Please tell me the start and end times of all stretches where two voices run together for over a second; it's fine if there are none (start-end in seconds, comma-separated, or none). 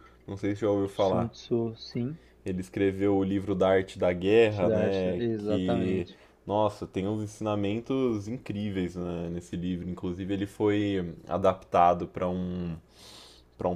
4.5-6.1